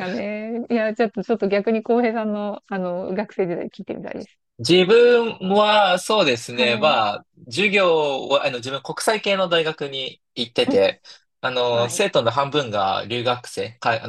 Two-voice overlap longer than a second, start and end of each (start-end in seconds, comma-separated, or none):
none